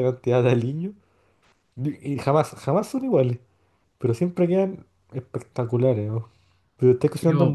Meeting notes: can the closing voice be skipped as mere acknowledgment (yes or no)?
no